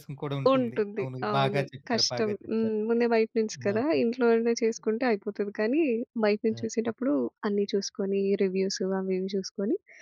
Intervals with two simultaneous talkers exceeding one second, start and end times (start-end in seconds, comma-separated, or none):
0.5-2.8